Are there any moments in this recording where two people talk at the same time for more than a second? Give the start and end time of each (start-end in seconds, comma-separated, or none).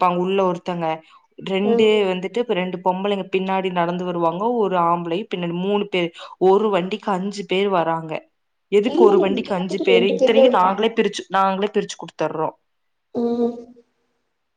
8.9-10.8